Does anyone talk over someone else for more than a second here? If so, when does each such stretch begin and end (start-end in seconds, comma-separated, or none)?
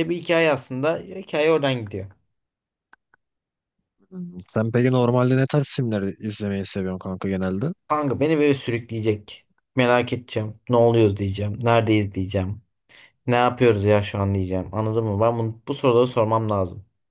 none